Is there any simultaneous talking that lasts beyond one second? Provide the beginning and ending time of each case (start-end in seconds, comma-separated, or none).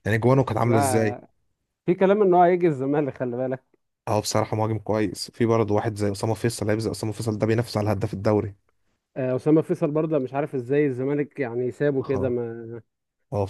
none